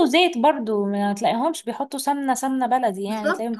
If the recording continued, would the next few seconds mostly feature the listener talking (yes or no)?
yes